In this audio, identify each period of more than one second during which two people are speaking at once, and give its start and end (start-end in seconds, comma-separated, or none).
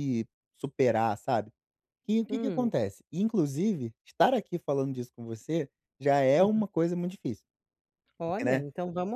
none